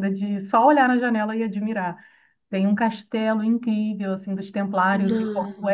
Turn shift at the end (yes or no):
no